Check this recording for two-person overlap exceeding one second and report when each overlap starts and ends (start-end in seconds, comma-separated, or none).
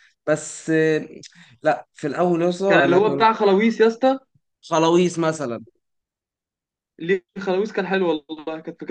none